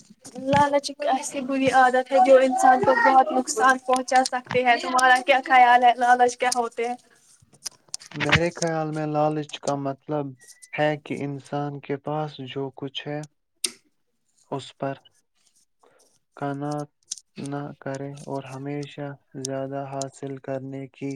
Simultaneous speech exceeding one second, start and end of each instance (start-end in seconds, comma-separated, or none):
none